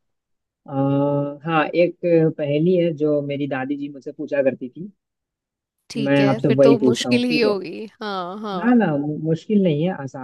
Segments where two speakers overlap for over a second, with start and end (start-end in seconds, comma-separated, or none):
6.1-7.5